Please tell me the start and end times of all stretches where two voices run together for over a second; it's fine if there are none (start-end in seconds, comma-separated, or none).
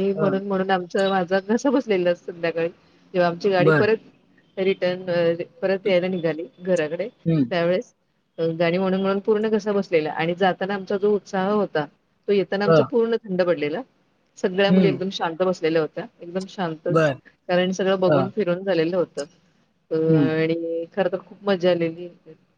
none